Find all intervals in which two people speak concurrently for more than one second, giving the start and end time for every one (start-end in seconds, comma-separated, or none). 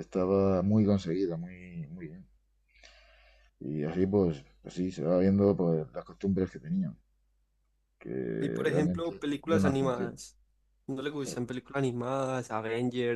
8.4-10.1